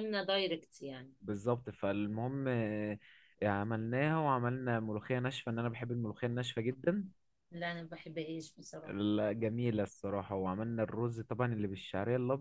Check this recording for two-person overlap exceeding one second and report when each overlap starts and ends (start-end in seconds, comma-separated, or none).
none